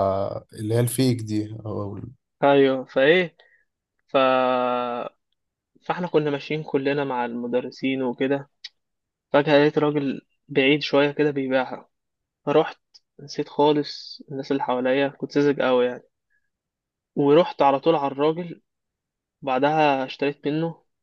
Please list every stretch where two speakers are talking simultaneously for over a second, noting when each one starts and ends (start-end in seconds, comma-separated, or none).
none